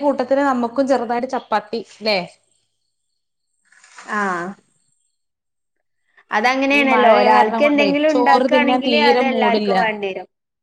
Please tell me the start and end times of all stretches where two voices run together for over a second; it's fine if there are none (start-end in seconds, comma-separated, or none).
6.8-9.7